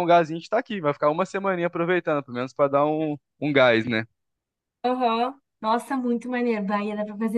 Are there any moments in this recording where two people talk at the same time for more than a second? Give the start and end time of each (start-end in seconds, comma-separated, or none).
none